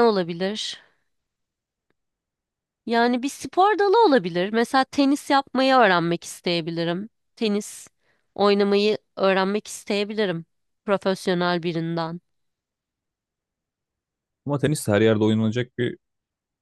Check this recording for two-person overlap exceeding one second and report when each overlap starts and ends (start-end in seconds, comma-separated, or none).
none